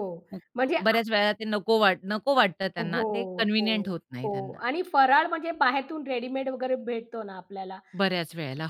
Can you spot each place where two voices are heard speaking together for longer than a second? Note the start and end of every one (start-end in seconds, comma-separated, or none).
2.8-4.6